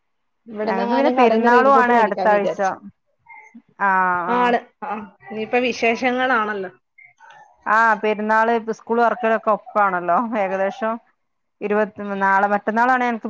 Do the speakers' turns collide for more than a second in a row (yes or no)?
yes